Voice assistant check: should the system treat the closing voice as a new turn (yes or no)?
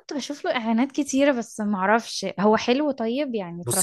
yes